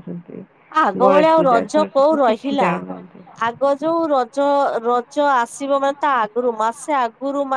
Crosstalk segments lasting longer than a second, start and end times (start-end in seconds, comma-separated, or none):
1.0-2.7